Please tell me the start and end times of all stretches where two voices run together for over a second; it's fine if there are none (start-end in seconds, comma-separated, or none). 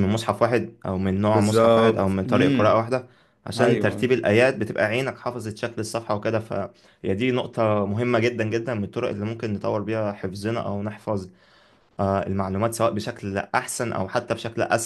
1.3-2.8